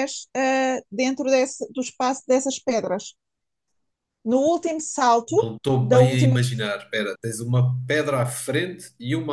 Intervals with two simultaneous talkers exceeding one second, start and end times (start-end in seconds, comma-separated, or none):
5.3-6.7